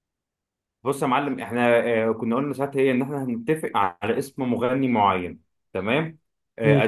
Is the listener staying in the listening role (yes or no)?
yes